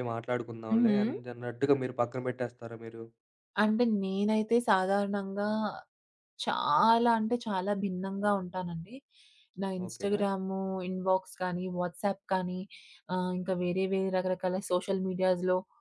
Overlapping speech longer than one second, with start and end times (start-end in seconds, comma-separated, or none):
none